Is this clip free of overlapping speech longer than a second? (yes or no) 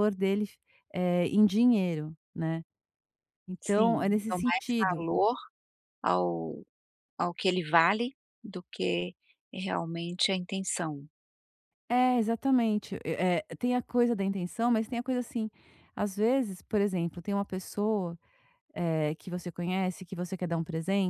no